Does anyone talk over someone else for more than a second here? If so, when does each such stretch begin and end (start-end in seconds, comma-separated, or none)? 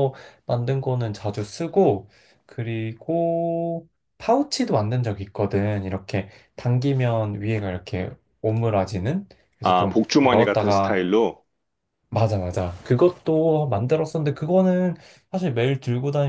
9.6-11.0